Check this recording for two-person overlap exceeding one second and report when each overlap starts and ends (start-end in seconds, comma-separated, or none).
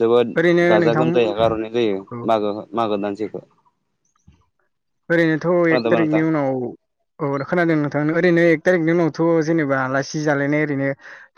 none